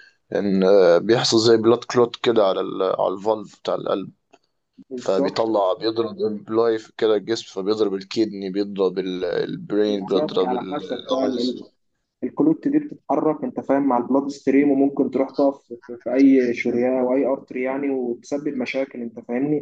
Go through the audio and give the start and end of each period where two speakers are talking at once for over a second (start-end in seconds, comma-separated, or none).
9.9-11.2